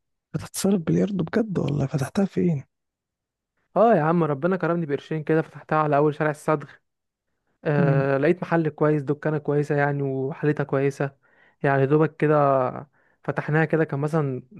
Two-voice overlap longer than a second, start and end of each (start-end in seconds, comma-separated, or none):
none